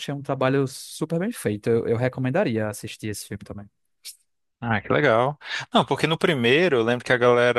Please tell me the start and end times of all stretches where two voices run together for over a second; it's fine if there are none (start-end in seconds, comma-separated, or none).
none